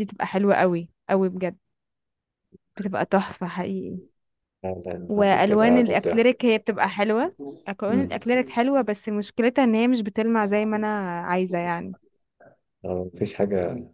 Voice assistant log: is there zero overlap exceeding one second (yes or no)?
no